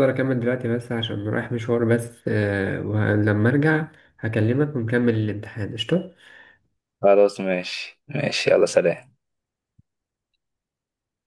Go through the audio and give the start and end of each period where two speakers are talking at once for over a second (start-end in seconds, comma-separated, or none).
none